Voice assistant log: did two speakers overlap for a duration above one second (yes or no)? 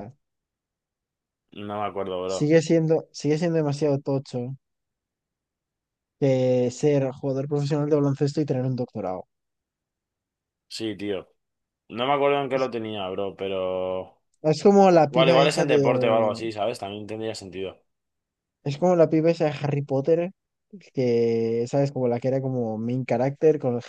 yes